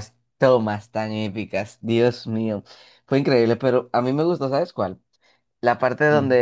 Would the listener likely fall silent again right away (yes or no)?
yes